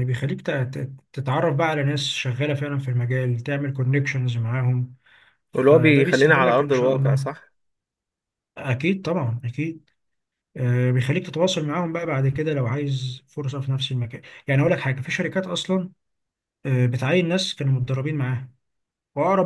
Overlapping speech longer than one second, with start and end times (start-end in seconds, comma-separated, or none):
5.5-7.3